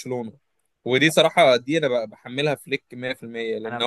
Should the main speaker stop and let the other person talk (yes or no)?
no